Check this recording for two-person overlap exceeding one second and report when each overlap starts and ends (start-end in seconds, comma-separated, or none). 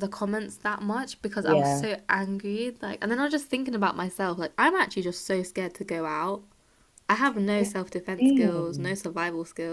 7.6-9.0